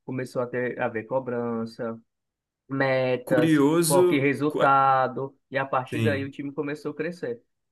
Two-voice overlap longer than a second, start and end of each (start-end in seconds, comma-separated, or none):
3.2-4.7